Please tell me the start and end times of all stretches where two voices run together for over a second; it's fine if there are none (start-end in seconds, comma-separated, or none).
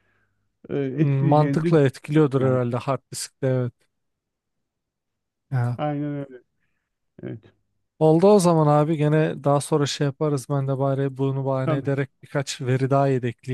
0.9-2.6